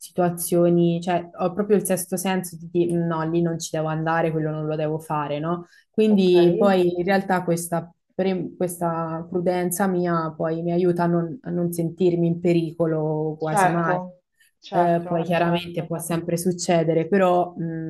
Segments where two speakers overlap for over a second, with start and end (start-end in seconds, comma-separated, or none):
14.7-15.9